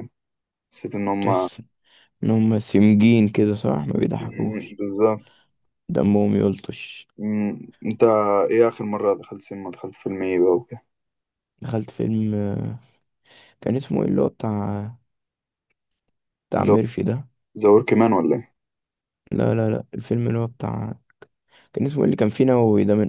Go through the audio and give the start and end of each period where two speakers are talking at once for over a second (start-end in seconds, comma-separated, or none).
none